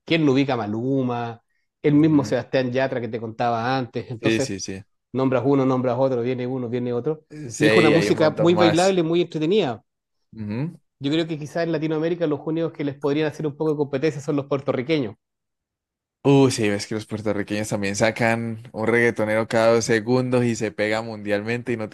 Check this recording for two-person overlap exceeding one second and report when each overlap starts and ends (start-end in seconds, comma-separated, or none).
7.5-9.0